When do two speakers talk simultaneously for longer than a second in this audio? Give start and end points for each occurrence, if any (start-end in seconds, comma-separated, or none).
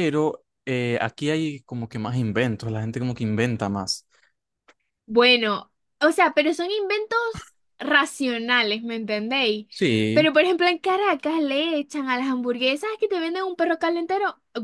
none